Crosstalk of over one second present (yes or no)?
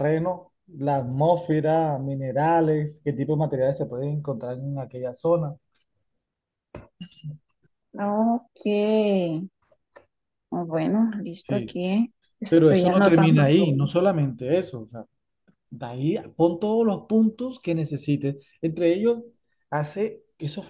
yes